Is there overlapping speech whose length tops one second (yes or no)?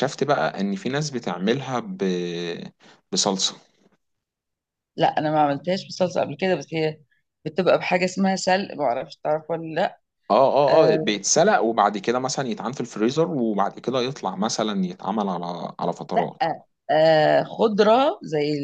no